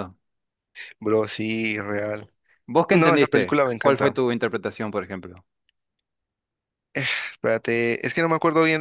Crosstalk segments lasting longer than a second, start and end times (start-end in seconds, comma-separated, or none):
2.9-4.2